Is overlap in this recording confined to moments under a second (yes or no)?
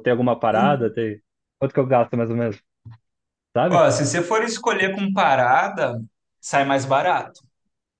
yes